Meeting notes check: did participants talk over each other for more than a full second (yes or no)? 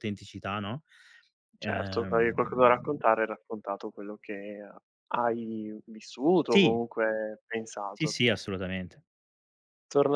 yes